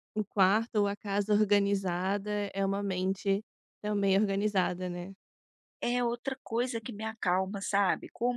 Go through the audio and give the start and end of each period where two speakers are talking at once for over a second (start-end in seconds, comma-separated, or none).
none